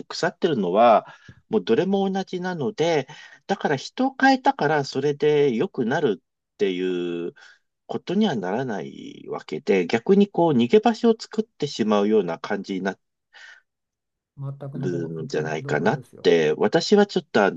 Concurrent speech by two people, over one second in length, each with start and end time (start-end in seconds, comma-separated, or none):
14.7-16.3